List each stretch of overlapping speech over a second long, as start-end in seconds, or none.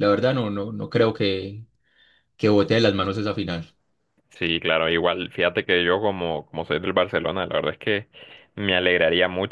none